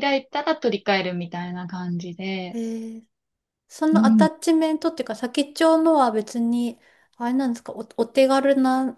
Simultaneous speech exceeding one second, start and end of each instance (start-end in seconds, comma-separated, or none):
none